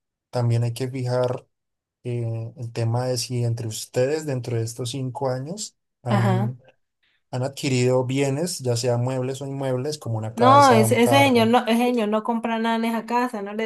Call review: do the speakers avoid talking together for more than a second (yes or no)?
no